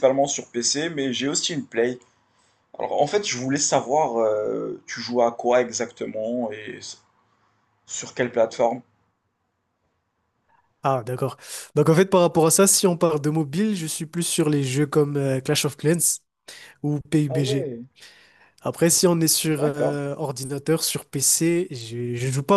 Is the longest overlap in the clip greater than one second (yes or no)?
no